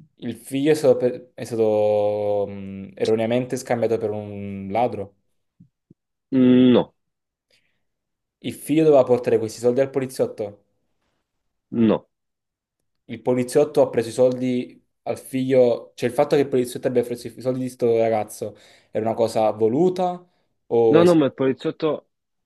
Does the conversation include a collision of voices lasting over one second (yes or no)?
no